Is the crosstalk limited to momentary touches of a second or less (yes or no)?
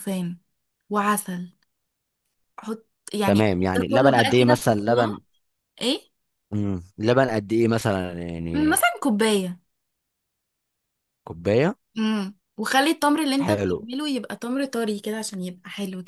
no